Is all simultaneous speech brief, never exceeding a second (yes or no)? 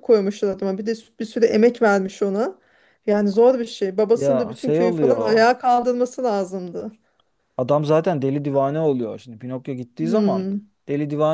no